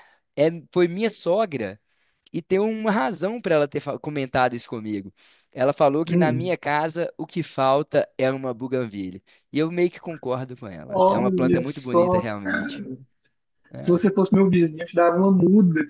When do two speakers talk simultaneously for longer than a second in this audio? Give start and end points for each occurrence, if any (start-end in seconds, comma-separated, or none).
10.9-12.8